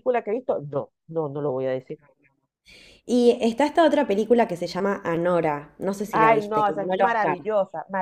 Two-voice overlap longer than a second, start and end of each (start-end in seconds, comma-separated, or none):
6.1-7.4